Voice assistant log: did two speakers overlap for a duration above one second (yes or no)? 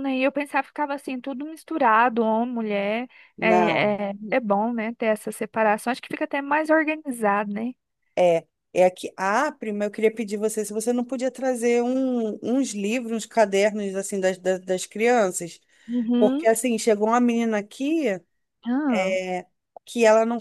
no